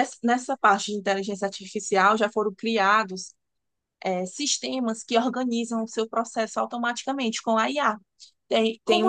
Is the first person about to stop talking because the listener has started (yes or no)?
no